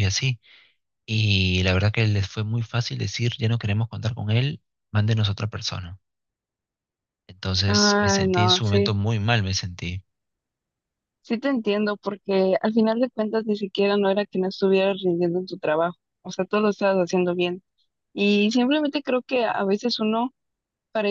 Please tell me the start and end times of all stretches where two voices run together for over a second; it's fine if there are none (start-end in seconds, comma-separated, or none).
7.7-8.9